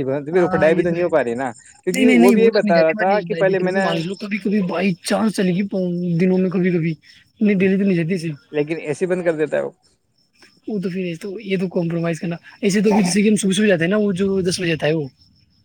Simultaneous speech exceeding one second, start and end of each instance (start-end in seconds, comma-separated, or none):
1.8-3.9